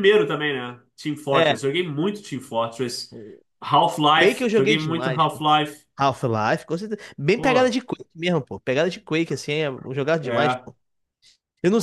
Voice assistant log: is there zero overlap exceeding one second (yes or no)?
no